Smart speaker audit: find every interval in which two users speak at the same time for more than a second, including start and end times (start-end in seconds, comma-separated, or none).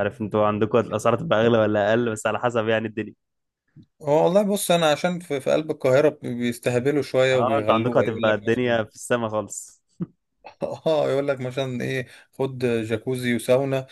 7.3-8.8